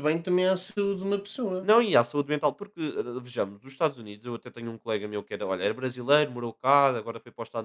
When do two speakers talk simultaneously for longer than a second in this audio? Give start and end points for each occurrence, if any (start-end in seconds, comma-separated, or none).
none